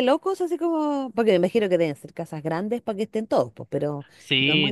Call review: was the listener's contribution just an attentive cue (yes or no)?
no